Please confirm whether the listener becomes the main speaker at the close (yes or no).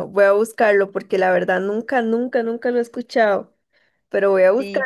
no